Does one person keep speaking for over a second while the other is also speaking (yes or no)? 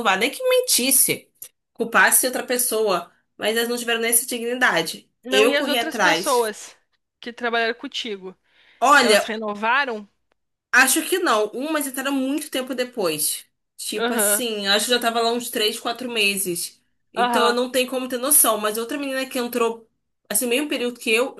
yes